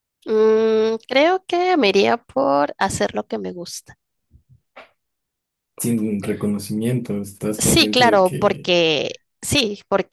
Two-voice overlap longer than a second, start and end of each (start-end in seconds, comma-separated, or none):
7.6-8.8